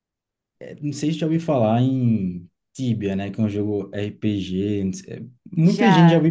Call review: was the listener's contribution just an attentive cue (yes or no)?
yes